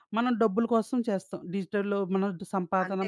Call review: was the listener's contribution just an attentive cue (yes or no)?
no